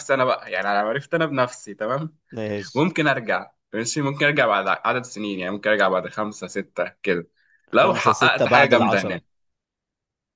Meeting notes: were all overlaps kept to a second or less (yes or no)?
no